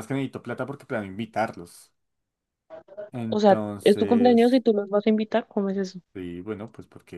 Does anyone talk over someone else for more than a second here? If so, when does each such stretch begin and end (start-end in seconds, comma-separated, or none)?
3.3-4.6